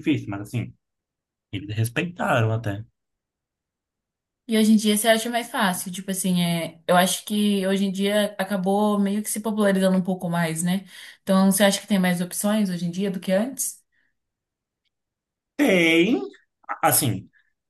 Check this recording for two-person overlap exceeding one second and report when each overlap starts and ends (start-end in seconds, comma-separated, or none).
none